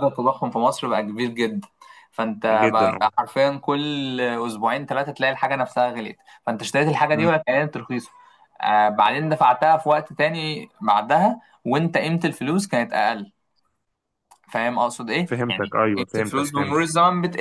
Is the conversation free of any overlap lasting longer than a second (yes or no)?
no